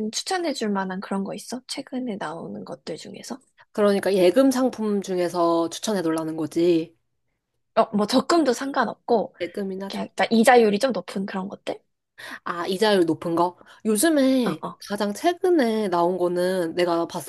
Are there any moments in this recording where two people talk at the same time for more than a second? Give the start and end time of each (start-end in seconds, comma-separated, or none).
none